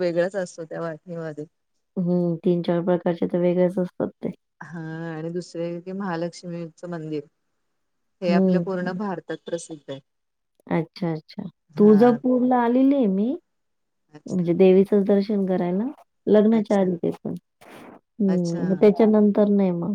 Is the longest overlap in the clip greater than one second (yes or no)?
no